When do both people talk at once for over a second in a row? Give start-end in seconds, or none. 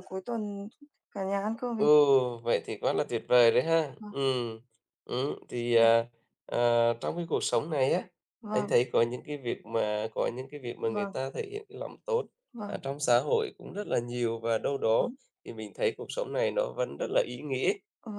none